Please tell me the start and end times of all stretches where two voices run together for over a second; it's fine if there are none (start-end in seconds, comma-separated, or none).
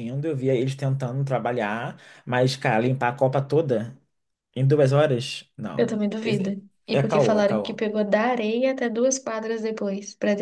5.8-7.8